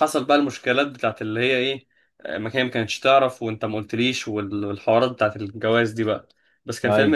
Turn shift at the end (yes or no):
no